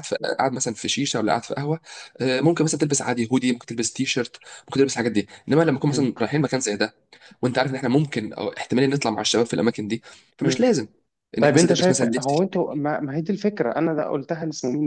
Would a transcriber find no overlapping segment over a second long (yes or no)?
no